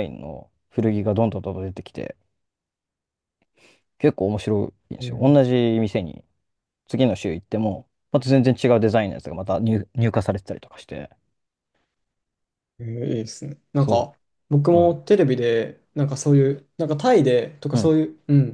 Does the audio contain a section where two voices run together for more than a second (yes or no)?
no